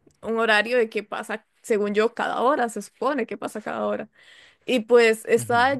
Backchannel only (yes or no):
yes